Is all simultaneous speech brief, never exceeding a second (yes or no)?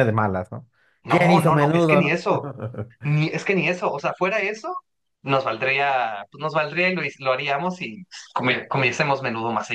no